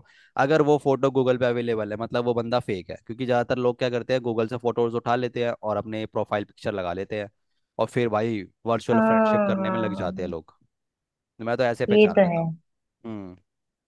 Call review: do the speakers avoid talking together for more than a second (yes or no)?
no